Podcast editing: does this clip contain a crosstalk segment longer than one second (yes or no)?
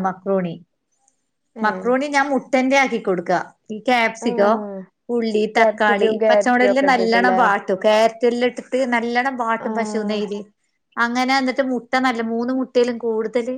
yes